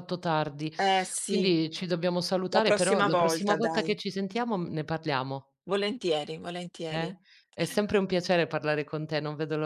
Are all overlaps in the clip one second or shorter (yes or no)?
no